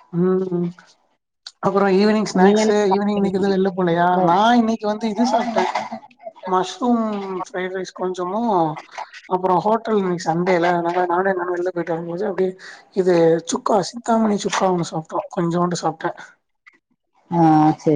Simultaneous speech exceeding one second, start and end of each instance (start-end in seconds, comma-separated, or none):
2.4-4.2